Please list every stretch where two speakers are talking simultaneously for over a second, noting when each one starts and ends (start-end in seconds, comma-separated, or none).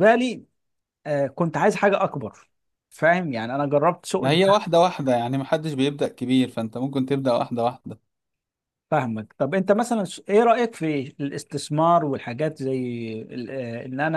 none